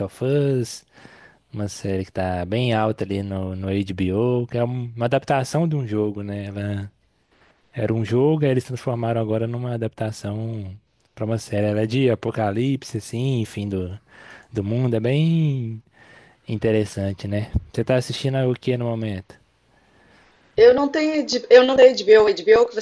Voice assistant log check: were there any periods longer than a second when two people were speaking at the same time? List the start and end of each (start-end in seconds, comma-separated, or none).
none